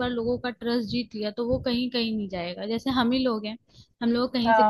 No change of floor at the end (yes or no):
yes